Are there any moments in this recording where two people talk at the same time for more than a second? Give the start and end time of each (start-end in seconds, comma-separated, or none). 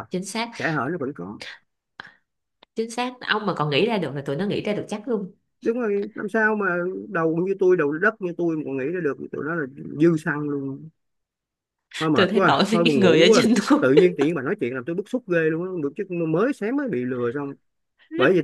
12.1-13.8